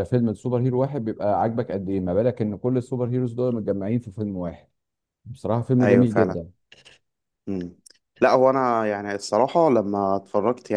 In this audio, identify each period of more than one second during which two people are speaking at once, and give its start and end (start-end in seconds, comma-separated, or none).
none